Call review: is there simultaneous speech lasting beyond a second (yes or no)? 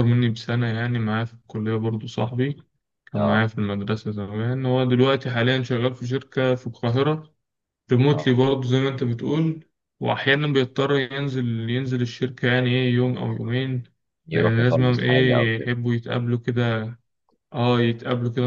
yes